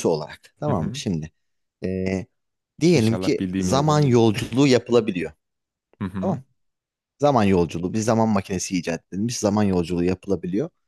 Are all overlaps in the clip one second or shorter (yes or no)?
no